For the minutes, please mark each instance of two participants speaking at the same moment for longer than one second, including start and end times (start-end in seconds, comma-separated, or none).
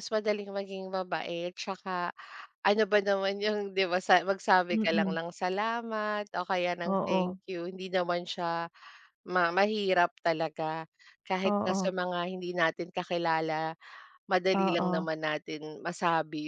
none